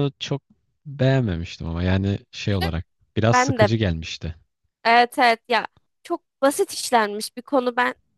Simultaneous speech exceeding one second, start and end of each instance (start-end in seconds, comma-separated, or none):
none